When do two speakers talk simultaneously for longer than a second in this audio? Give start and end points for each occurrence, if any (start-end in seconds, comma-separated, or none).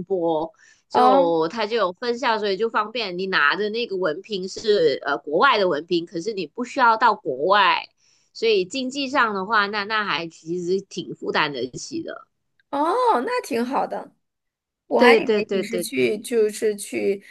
15.0-16.2